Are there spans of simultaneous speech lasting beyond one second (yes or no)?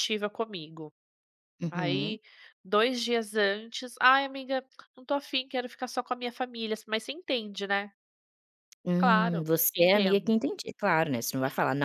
yes